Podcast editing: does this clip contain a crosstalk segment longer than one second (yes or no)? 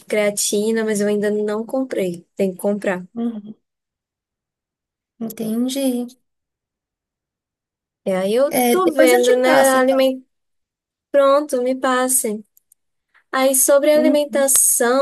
yes